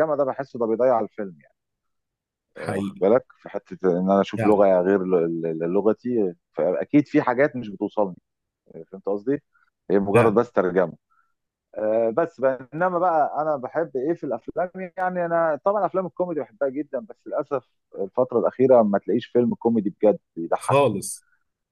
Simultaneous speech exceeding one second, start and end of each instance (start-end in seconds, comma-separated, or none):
none